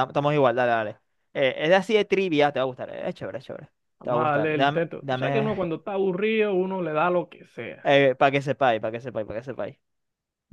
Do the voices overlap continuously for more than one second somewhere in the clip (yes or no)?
yes